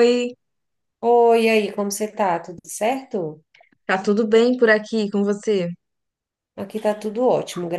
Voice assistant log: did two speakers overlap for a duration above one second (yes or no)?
no